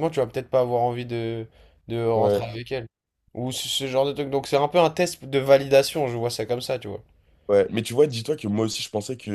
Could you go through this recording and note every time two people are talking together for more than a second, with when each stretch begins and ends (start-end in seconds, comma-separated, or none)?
none